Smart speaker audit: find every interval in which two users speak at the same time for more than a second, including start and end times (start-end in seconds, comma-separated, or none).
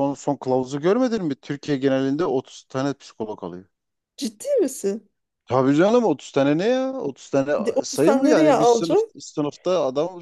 7.6-9.0